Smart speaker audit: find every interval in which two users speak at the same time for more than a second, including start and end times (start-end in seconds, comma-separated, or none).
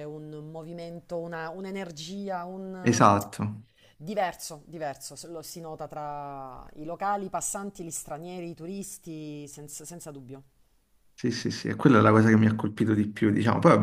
none